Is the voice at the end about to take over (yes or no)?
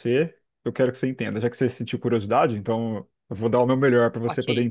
yes